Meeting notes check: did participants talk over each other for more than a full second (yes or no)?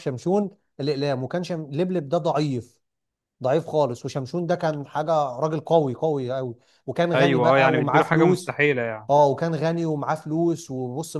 yes